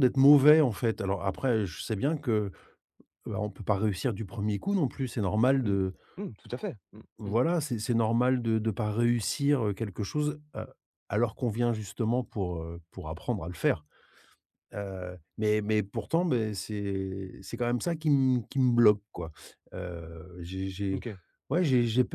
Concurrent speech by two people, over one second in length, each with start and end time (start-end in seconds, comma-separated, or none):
none